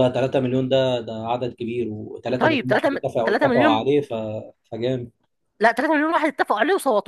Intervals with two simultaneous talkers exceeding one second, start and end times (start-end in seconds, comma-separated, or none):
2.4-3.9